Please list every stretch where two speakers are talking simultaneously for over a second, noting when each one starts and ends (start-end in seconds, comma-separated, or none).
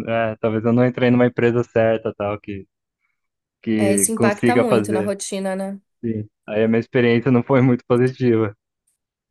3.7-5.1